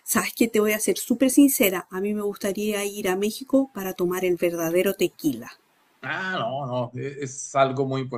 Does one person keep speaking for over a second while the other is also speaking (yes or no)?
no